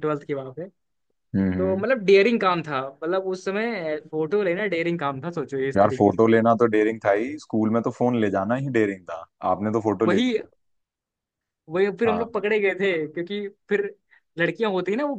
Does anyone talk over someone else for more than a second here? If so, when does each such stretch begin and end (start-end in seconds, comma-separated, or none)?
none